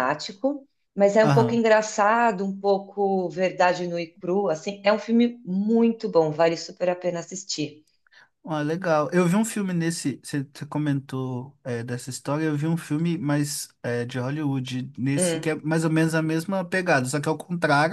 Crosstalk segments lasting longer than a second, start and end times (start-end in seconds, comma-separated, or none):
none